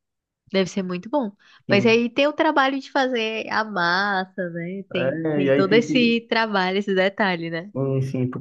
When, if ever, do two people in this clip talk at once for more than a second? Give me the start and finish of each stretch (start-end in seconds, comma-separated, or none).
4.9-6.2